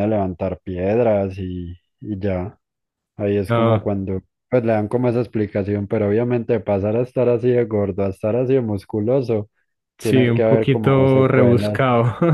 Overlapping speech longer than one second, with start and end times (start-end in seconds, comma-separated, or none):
10.0-11.8